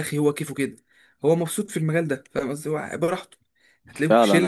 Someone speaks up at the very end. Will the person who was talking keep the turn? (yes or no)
yes